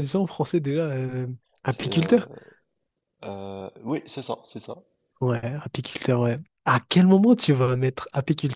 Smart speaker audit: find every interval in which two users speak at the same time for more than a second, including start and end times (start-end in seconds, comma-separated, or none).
none